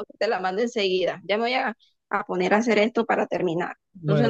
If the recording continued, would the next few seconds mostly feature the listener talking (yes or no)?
yes